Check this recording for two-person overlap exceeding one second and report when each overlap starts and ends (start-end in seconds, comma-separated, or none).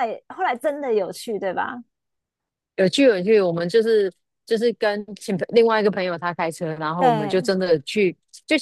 none